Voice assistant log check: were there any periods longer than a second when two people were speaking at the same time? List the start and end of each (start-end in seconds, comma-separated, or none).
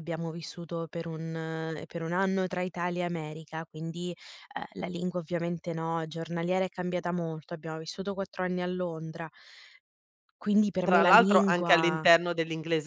10.8-12.0